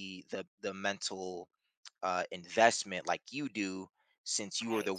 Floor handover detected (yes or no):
no